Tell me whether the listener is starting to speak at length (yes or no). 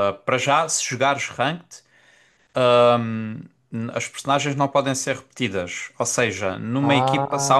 no